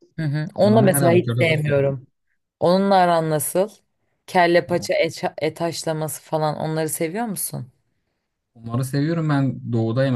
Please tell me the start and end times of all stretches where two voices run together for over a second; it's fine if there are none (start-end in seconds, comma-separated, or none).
0.6-1.9